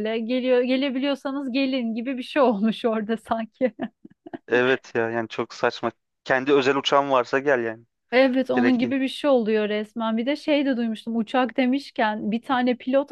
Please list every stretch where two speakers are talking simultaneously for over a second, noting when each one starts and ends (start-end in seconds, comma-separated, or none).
none